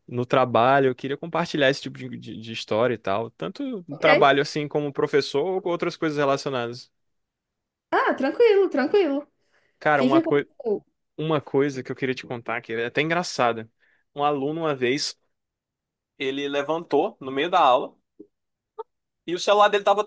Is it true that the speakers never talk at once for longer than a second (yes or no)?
yes